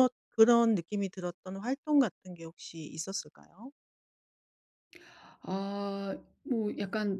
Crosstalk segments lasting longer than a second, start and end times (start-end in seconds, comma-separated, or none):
none